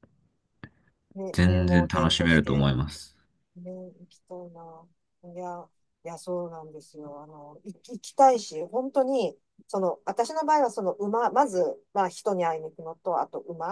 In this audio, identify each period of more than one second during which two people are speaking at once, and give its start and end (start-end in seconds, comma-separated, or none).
1.3-2.7